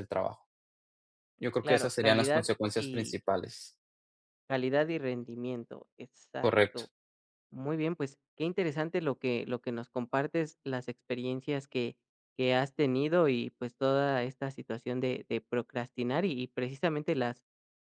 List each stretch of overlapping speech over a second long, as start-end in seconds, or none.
1.6-3.2